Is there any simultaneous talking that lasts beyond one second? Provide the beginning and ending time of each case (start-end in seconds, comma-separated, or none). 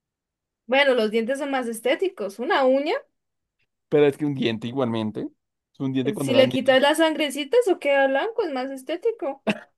none